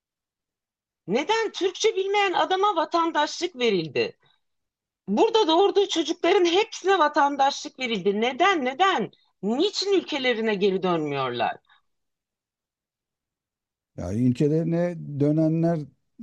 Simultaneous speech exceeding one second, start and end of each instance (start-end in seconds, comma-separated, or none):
none